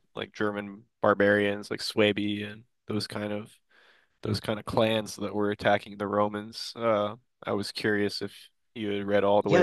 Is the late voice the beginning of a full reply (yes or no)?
yes